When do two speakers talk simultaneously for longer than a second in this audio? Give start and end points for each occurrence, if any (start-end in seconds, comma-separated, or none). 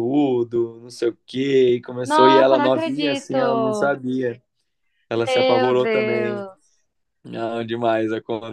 2.0-4.0, 5.2-6.5